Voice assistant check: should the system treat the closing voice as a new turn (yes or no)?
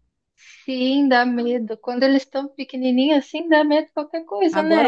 yes